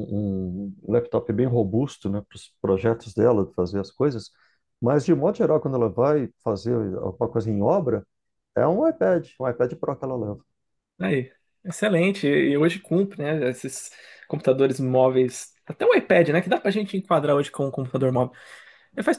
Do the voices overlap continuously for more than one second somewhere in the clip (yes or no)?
no